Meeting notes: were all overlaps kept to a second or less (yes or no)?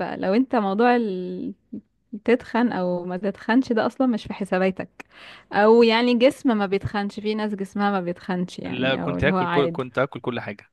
no